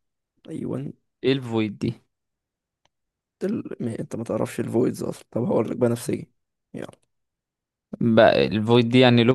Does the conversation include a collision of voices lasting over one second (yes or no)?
no